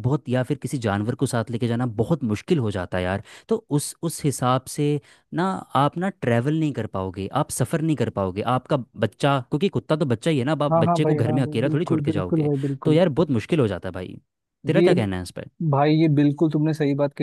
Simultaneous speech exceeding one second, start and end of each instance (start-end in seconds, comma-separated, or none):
10.7-13.0